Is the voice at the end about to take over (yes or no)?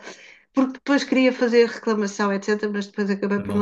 no